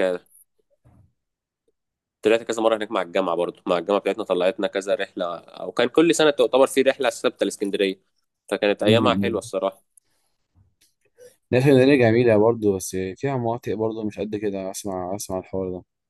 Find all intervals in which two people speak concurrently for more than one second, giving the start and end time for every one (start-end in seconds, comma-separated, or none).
none